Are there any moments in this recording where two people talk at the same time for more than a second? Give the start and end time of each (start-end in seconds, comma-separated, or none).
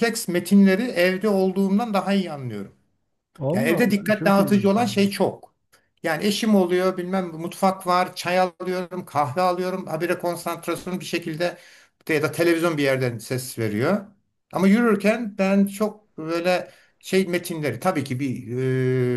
3.5-5.0